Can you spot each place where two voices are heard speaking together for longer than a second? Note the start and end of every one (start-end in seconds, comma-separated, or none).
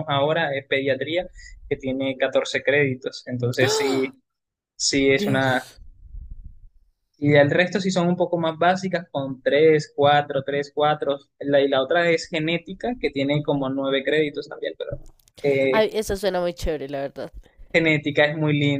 none